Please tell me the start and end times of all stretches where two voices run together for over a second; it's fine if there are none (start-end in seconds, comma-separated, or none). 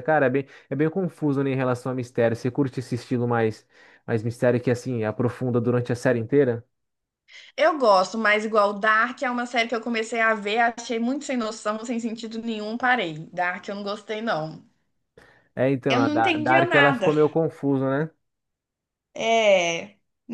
15.9-17.1